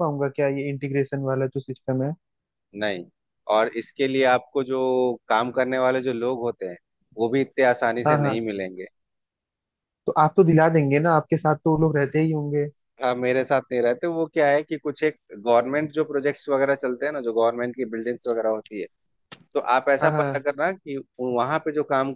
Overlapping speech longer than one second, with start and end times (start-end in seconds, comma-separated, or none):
none